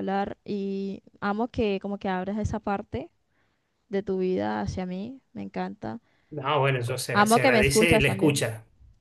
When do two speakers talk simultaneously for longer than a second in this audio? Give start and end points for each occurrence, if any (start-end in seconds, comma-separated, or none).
7.1-8.4